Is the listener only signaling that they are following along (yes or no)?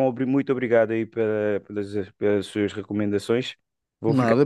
yes